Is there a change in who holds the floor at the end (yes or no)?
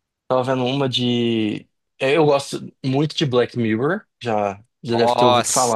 yes